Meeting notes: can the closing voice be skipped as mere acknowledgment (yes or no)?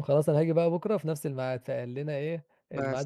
no